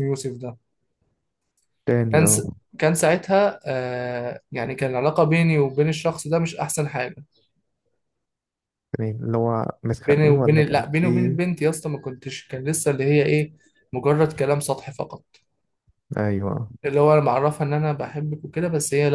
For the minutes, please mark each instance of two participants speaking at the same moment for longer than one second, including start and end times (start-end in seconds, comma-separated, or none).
10.1-11.4